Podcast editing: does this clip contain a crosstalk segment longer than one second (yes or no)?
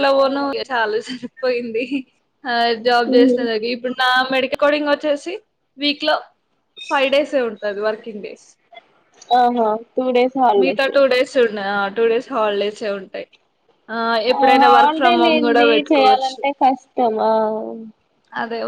yes